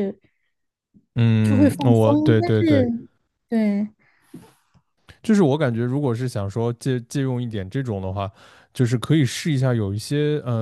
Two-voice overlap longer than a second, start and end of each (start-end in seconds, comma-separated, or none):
1.4-2.9